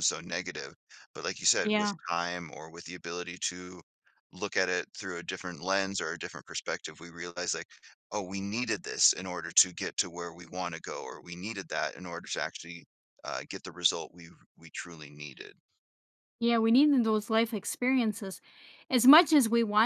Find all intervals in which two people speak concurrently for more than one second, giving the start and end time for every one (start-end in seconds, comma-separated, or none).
none